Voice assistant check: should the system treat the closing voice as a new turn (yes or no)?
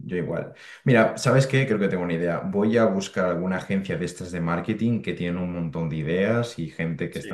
no